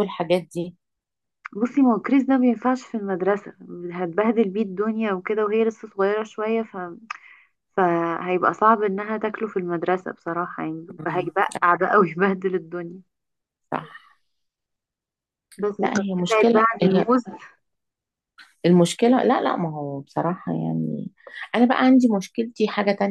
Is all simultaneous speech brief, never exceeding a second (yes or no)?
no